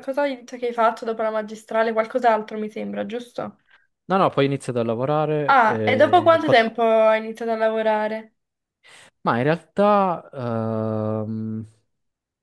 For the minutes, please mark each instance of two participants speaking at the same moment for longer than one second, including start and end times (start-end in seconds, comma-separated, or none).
5.5-6.7